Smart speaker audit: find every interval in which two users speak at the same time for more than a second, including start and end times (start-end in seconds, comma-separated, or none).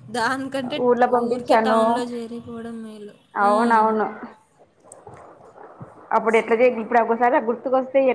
none